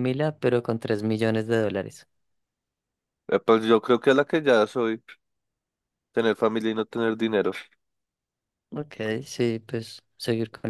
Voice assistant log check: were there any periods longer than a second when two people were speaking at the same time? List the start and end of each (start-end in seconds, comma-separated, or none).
none